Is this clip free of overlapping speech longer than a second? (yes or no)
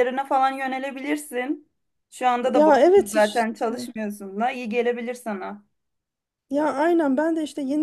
no